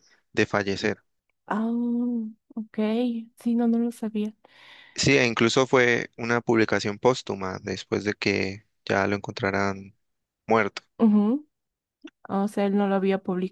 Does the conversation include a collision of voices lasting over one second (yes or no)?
no